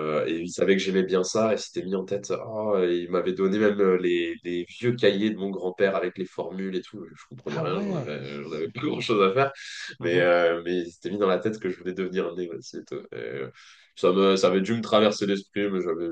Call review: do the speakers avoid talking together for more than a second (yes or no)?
no